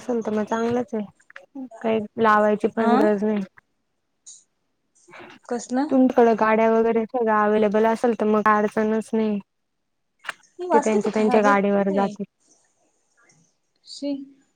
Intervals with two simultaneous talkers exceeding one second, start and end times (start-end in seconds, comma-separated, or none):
10.7-12.1